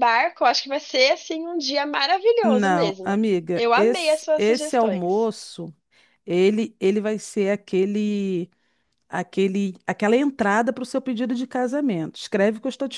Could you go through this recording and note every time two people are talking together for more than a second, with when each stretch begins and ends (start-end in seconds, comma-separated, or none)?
2.4-5.3